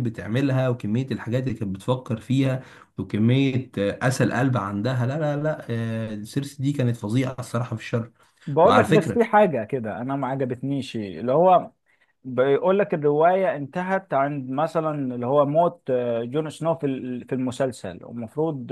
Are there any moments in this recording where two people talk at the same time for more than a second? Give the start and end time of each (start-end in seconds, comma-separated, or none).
none